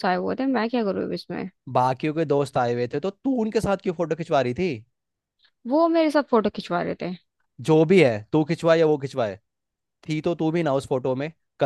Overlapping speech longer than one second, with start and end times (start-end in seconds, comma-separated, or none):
none